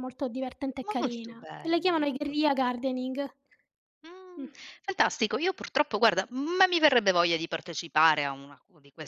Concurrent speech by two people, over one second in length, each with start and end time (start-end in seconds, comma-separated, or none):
1.0-2.7